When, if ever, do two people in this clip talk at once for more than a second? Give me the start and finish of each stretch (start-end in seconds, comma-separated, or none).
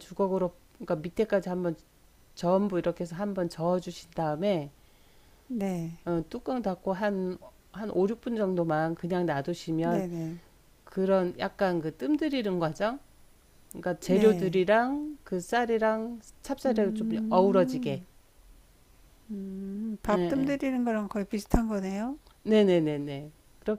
16.6-18.0